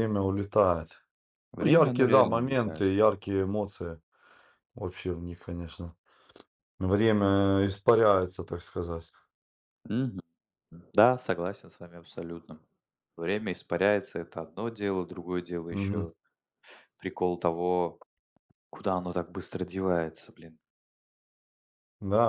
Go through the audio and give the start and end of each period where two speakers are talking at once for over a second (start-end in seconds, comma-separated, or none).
1.6-2.9